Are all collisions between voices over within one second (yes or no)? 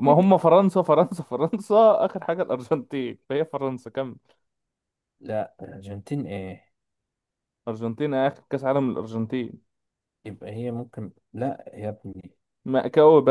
yes